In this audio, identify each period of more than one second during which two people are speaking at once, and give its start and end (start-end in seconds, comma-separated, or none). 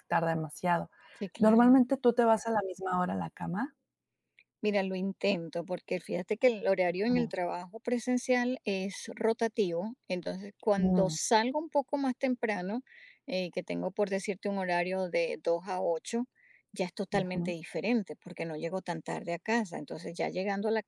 none